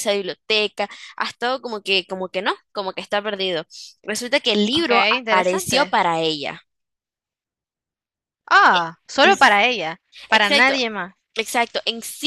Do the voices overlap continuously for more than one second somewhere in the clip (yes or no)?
yes